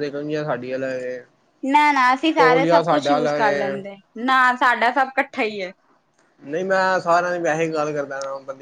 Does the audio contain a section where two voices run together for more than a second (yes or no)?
yes